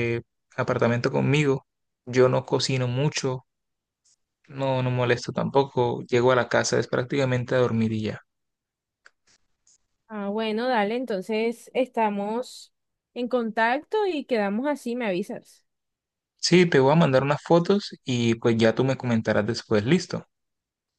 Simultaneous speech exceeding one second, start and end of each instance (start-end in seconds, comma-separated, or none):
none